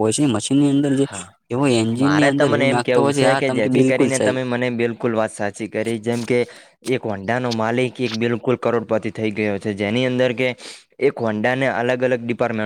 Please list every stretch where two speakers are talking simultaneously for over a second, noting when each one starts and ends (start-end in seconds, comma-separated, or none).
2.0-4.3